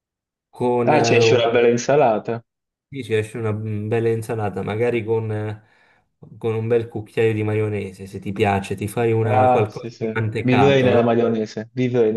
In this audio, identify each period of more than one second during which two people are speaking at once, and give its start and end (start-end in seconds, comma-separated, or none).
9.2-11.3